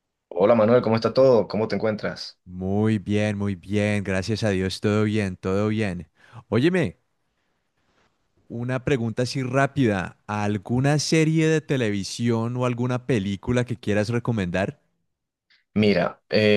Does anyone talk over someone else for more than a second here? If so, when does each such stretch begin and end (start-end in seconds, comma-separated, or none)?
none